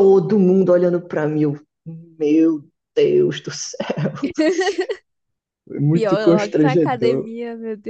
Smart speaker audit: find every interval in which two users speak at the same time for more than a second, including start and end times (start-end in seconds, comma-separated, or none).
5.9-7.3